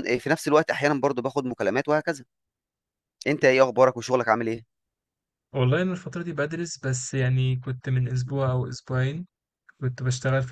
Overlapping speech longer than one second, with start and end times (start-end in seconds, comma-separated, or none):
none